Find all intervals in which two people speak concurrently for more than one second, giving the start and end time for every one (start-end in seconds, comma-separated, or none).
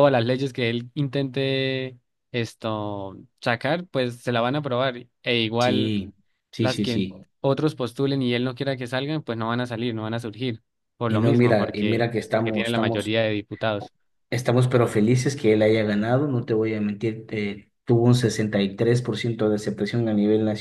11.1-13.2